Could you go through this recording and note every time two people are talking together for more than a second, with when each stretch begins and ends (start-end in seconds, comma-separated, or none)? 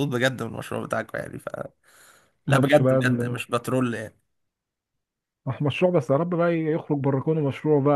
none